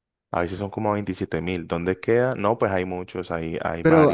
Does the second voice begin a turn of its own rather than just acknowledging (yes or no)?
yes